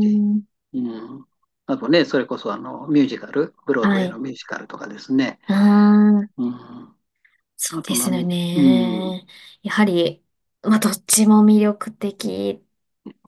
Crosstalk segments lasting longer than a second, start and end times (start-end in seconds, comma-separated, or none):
7.7-9.2